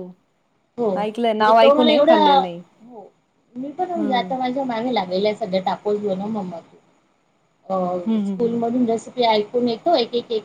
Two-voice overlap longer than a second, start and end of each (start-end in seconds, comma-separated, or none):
1.0-2.6